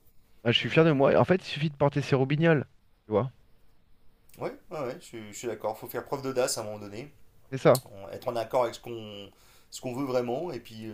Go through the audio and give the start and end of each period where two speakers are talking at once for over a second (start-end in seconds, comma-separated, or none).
none